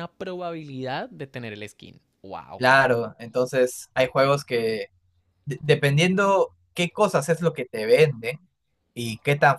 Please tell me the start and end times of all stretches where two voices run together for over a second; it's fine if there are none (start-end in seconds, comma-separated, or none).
none